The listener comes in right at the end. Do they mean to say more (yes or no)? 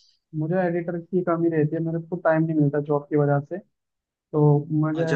yes